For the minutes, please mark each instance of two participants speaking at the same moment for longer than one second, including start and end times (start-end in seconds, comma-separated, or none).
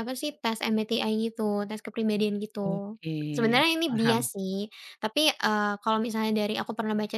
2.6-4.3